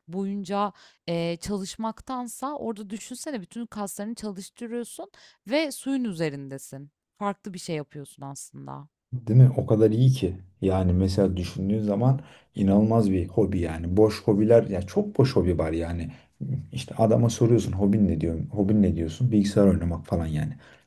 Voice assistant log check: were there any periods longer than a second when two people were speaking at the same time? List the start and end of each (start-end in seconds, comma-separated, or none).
none